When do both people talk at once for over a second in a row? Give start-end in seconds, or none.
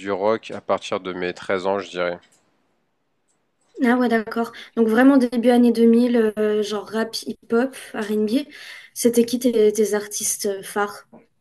none